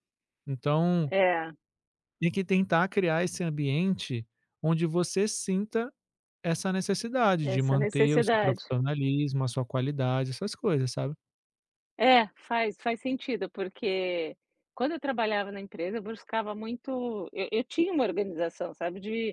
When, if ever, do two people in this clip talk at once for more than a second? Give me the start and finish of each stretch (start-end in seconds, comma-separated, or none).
7.4-8.6